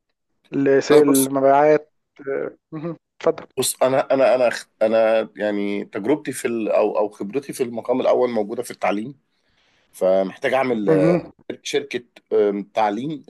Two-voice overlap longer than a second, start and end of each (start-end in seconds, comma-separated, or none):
none